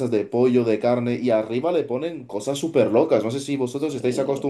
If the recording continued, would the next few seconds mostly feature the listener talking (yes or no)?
no